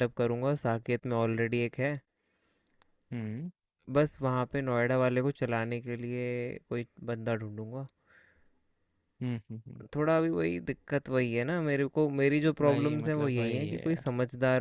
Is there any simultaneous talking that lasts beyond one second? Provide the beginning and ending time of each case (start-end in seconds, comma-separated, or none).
12.7-14.1